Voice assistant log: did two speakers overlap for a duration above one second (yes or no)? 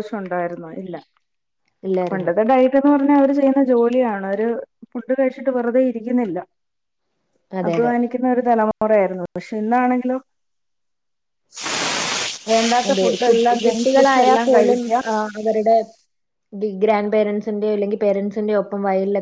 yes